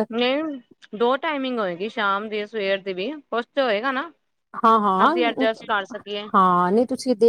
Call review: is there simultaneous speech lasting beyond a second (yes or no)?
no